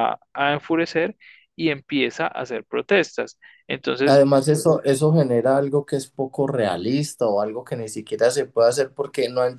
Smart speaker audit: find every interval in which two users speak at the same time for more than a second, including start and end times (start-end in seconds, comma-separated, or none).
none